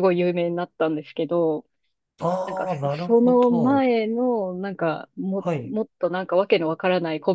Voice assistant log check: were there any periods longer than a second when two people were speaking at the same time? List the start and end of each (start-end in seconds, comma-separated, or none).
2.4-3.9